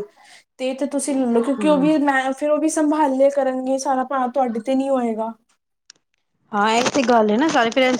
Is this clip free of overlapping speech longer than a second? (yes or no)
yes